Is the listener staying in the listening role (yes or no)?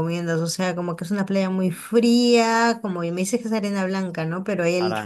yes